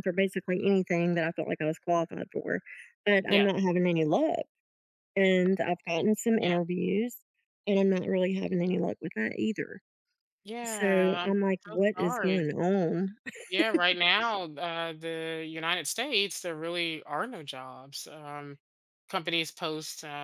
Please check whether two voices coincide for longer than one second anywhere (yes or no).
yes